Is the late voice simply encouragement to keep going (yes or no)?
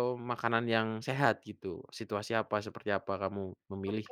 no